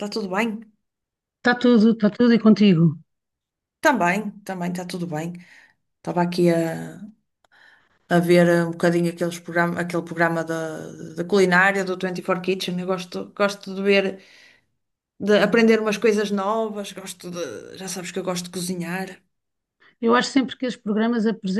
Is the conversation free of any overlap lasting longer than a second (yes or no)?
yes